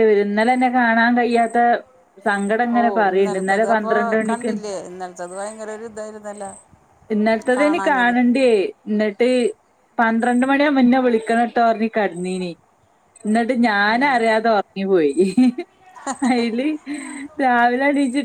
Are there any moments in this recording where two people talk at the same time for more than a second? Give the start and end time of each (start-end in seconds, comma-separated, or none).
2.8-4.5